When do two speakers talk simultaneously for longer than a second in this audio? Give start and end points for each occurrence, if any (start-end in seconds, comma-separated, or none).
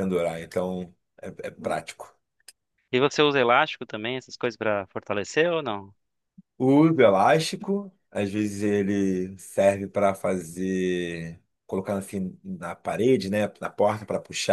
none